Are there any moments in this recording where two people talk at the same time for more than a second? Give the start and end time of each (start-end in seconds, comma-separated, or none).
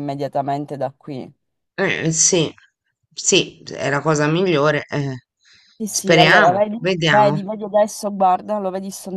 5.9-7.4